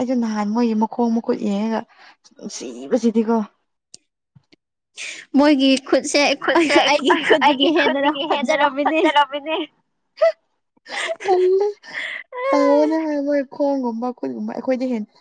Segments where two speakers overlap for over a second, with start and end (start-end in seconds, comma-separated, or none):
7.5-9.0